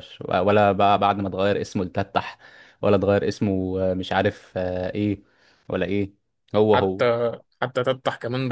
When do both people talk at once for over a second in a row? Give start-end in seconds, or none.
none